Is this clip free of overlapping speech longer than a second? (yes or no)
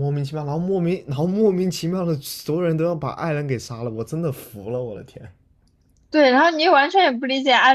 yes